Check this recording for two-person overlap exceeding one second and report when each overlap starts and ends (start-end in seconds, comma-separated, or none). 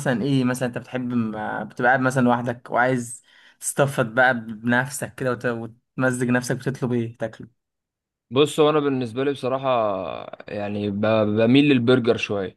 none